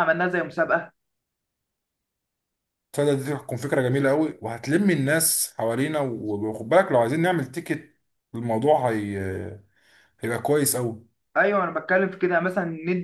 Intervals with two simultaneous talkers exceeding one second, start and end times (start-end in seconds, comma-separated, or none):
none